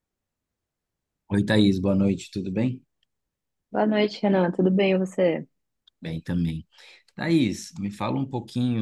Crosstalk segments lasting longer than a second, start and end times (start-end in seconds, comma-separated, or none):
none